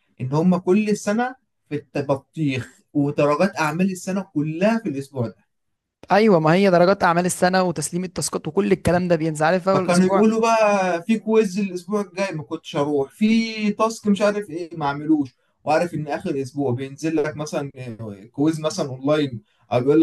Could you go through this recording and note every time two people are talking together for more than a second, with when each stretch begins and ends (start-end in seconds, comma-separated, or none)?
none